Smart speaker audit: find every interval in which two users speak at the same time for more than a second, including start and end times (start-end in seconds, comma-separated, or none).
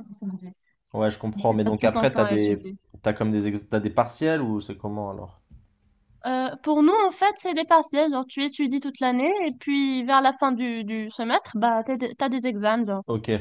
1.5-2.8